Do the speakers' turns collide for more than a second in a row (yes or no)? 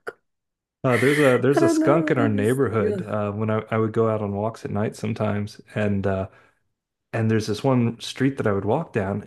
yes